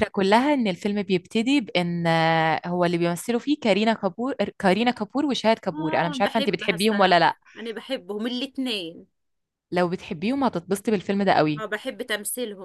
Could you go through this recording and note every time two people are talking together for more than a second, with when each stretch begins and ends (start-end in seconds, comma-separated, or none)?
5.7-7.2